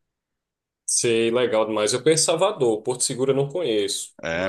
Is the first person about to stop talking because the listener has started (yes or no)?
yes